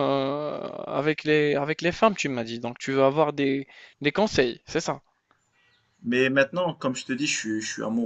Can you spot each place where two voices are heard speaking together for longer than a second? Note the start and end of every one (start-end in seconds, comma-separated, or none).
none